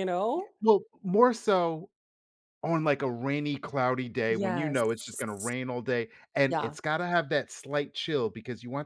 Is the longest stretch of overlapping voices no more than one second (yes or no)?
no